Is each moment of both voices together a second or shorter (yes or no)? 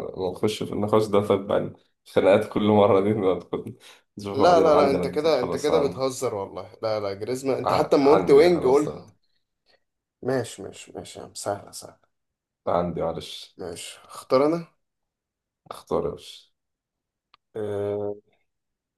no